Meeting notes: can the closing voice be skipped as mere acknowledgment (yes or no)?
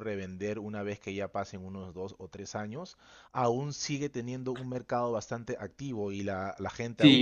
no